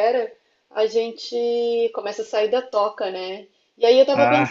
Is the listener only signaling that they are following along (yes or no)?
yes